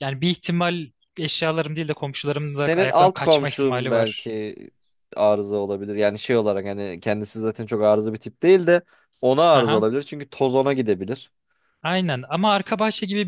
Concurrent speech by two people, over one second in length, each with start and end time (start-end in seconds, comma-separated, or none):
2.1-4.3